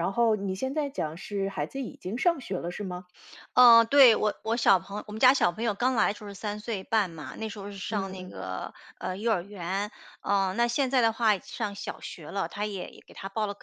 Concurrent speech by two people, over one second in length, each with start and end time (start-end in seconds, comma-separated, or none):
none